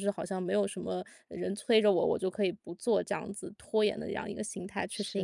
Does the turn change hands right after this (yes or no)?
yes